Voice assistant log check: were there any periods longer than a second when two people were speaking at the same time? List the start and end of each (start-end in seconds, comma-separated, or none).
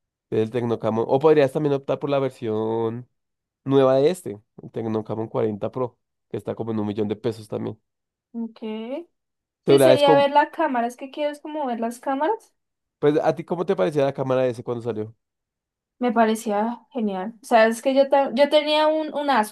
none